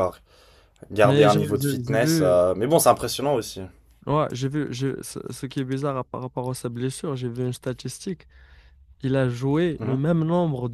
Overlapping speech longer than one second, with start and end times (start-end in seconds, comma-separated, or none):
1.0-2.4